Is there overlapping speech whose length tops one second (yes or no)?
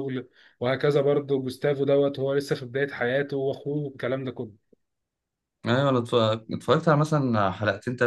no